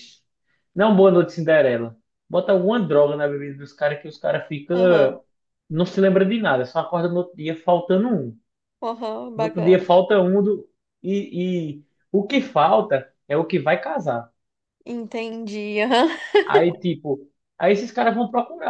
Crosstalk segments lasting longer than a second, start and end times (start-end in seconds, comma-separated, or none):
none